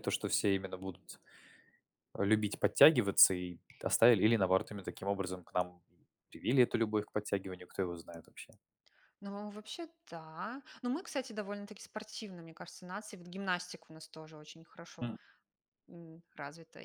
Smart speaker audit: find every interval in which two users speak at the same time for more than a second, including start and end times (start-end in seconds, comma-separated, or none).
none